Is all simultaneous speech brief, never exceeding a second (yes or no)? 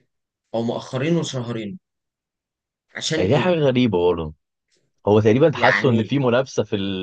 yes